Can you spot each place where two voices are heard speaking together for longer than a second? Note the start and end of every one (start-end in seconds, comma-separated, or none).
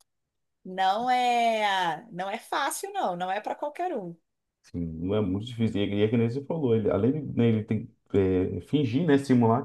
none